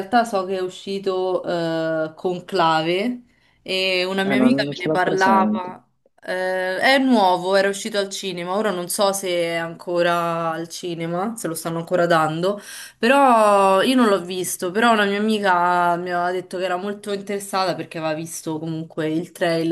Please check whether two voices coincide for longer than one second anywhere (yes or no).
yes